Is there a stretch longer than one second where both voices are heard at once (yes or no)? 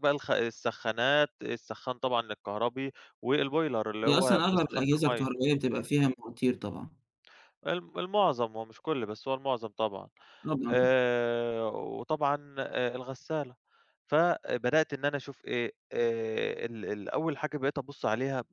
yes